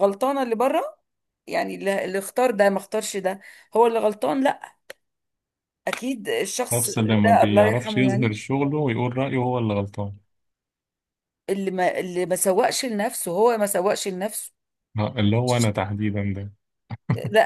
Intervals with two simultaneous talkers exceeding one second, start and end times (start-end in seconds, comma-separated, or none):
6.7-8.3